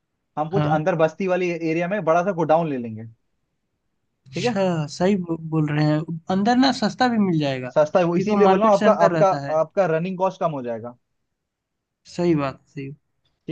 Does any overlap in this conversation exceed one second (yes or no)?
yes